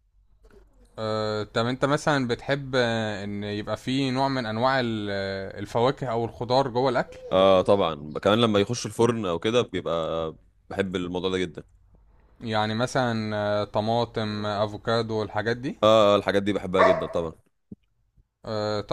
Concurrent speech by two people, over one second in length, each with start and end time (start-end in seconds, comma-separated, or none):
none